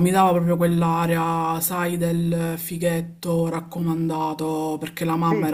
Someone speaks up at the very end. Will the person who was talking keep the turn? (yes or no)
yes